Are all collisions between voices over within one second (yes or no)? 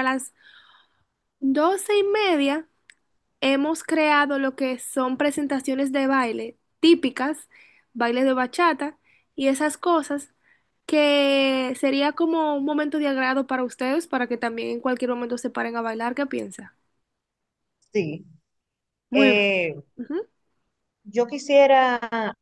yes